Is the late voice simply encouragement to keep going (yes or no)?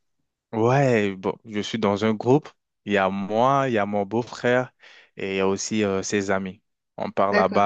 yes